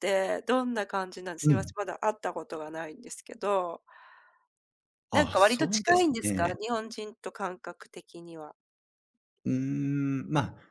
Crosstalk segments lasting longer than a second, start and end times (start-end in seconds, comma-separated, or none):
5.1-6.5